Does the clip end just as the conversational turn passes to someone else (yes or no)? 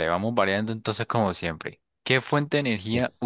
no